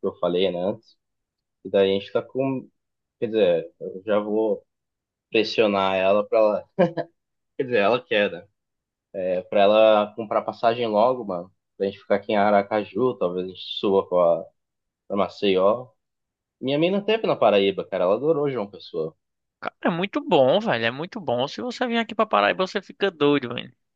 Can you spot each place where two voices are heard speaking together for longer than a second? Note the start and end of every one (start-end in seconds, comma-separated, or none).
none